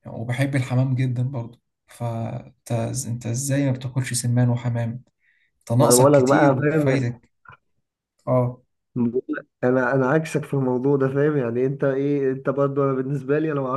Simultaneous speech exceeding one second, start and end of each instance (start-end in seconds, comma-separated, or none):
5.8-7.1